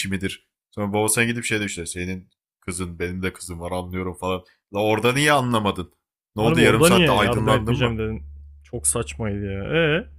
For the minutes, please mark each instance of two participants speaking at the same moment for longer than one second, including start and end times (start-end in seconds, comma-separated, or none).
6.4-8.0